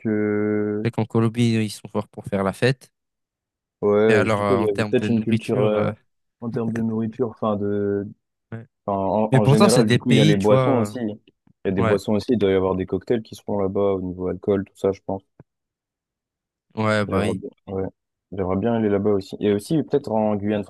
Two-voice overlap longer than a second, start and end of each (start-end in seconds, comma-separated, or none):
4.1-5.9, 9.3-10.9